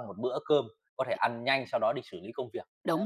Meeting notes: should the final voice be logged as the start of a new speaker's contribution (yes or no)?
yes